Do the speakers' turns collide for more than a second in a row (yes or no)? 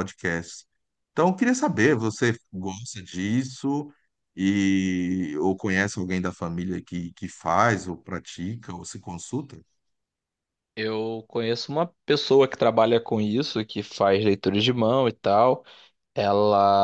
no